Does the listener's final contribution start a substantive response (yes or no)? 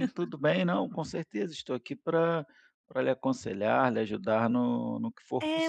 yes